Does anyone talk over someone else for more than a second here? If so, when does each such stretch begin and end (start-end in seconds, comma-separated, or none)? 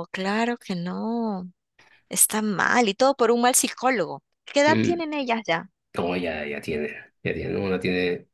none